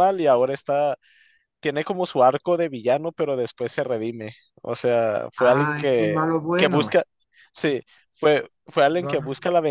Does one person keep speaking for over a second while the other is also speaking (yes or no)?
yes